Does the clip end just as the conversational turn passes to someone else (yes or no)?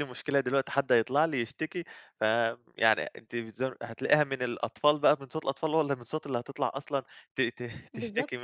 yes